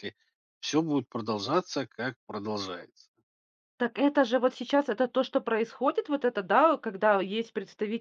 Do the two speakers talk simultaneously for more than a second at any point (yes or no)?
no